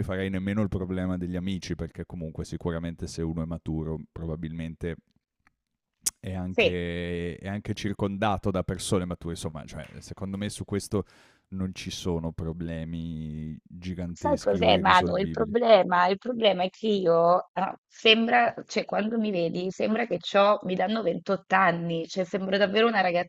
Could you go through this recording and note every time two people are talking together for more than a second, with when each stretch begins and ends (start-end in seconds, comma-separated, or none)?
14.1-15.5